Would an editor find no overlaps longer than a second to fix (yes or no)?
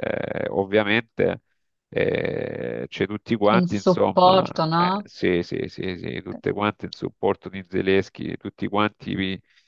no